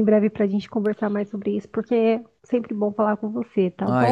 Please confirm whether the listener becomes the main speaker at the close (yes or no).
yes